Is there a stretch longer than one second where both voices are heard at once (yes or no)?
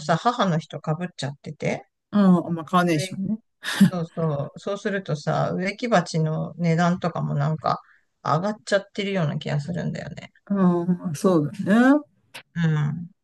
no